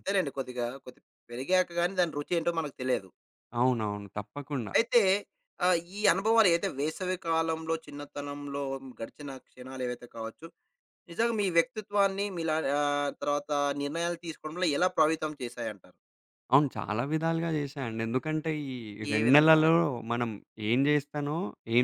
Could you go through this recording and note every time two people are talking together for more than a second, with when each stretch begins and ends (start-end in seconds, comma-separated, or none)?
none